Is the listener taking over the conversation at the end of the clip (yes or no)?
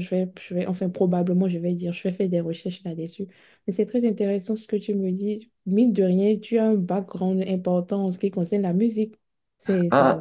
yes